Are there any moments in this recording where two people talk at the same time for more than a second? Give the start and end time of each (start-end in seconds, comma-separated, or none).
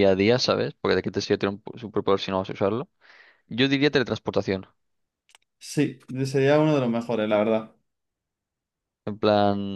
none